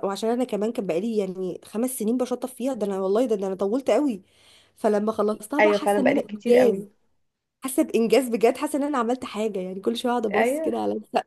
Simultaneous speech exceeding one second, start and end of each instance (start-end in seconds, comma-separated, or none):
5.6-6.8